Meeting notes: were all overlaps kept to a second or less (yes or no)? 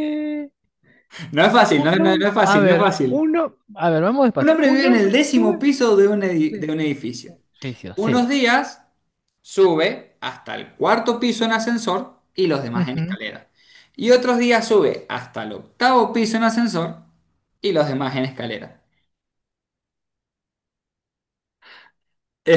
no